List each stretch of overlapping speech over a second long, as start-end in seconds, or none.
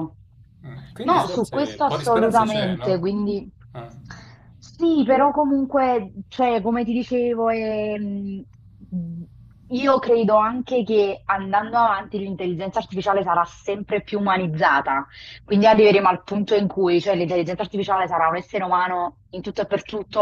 1.0-3.0